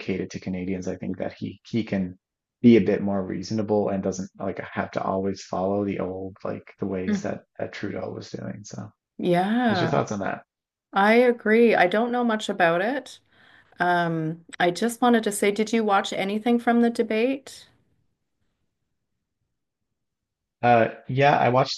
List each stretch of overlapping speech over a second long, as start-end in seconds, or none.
none